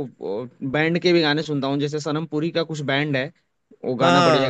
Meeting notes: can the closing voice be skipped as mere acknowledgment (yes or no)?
no